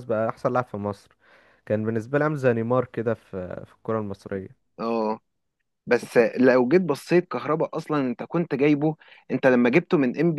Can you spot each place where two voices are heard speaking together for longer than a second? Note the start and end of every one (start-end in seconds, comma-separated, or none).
none